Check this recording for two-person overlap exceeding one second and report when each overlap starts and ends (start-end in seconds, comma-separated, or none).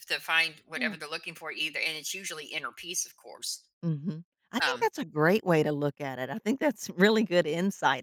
none